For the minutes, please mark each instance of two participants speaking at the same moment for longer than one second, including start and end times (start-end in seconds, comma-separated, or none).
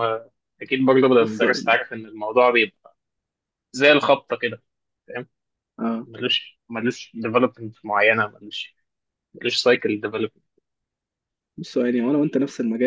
none